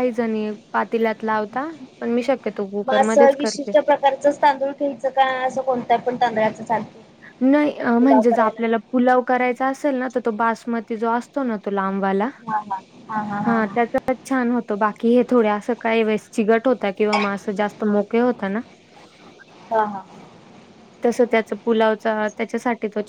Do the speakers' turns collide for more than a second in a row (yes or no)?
no